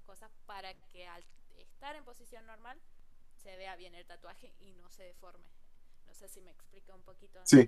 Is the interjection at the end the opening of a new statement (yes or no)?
yes